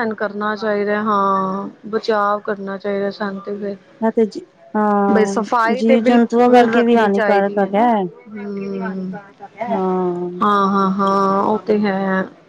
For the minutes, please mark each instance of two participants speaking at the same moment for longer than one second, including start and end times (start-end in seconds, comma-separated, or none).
5.1-7.8